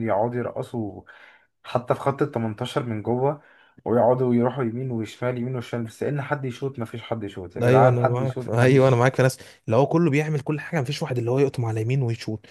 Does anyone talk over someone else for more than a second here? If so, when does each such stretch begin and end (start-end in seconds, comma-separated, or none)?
7.6-9.0